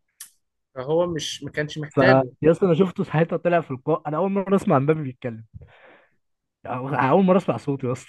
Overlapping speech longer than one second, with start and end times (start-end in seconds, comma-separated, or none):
none